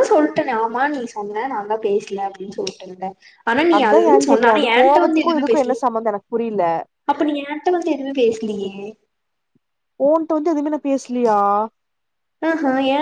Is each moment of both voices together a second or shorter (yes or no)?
no